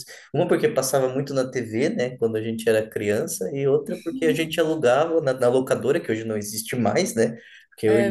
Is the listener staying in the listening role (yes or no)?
yes